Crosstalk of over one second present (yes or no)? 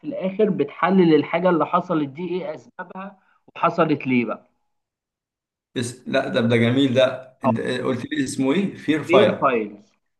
no